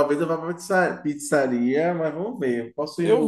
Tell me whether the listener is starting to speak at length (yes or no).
no